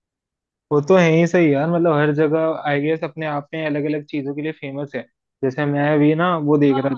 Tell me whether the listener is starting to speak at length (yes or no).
no